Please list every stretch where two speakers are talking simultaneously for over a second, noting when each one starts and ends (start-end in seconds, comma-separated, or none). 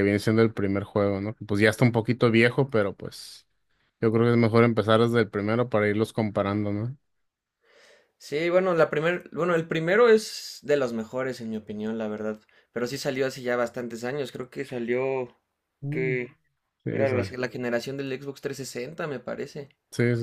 none